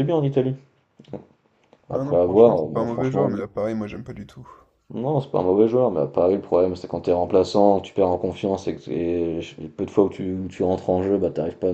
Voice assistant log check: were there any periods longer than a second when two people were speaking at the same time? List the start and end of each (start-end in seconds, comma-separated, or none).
1.9-3.4